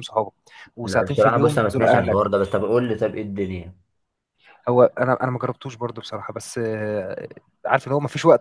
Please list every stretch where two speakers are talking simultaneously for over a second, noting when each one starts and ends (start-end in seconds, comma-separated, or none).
0.8-2.4